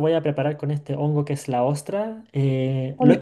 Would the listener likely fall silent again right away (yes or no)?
yes